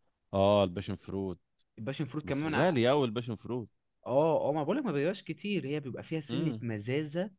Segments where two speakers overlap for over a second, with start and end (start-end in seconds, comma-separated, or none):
none